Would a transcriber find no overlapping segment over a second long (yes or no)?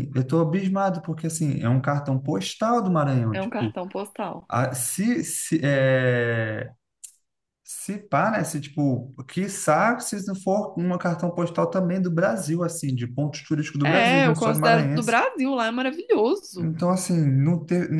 no